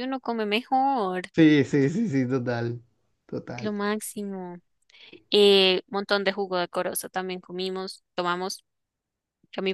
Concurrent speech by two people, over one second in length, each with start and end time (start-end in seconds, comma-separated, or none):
none